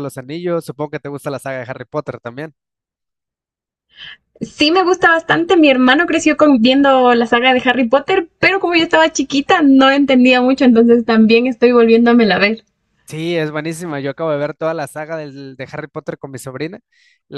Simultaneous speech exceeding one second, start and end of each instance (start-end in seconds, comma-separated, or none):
none